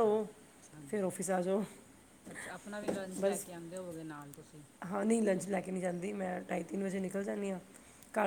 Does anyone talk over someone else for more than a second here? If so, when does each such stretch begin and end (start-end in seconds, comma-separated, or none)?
none